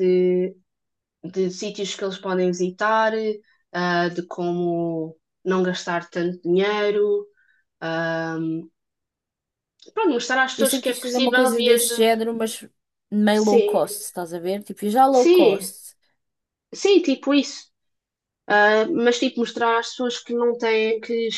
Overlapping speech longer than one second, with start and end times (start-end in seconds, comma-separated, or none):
10.6-12.1